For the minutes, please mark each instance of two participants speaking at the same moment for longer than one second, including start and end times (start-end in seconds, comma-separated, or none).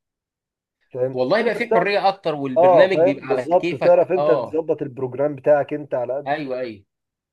2.6-4.6